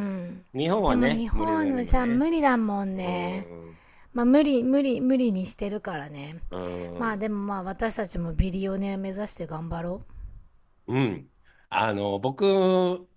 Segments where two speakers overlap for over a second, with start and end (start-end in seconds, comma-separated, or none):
0.8-2.3